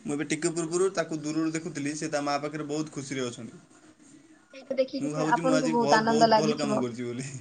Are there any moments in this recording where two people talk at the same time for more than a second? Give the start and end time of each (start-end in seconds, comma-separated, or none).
5.0-6.8